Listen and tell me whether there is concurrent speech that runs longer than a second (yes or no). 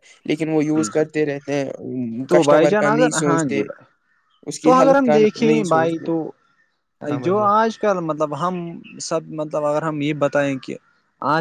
yes